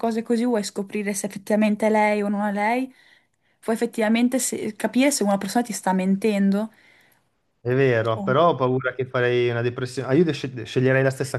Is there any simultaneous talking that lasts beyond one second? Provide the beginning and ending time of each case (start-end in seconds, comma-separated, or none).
none